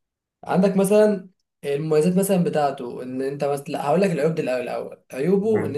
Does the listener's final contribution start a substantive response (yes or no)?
no